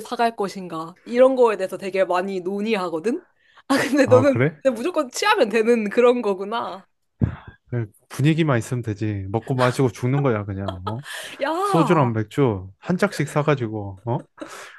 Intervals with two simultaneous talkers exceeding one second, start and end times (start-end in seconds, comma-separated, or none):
none